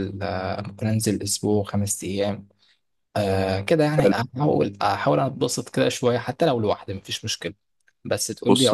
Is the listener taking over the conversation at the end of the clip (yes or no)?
yes